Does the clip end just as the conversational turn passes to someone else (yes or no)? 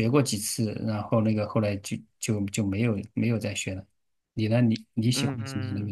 yes